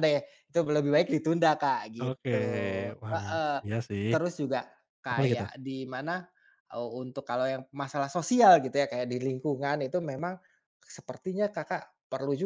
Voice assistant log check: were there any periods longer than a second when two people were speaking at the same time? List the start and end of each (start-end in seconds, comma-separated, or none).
none